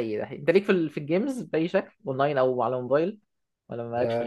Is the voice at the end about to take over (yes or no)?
yes